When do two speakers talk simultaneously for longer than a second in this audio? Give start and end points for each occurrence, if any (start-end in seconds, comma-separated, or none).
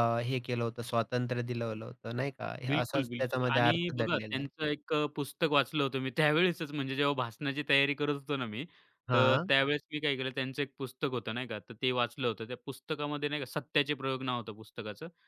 2.7-4.5